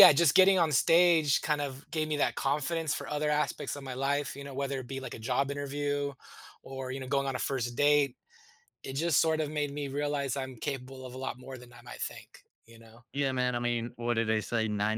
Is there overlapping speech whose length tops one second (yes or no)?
no